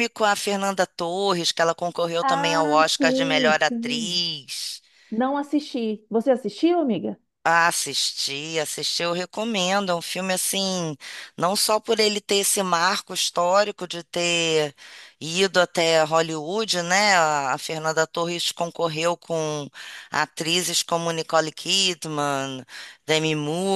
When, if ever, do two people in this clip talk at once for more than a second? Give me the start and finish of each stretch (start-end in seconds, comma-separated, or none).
2.2-4.2